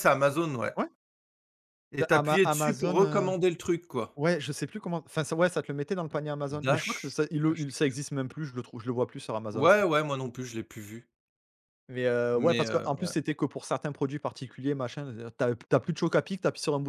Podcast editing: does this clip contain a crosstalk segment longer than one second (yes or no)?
yes